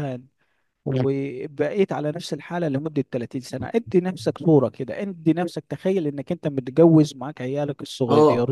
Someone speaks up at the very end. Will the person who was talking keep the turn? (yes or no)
yes